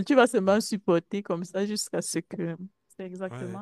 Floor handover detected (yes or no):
no